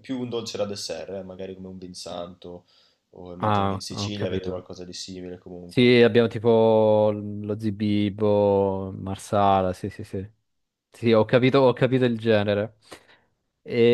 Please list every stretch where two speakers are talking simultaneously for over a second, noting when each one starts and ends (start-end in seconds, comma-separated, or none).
3.4-4.6